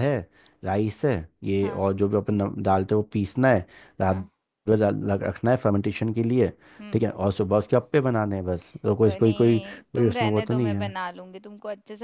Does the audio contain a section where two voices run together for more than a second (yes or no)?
yes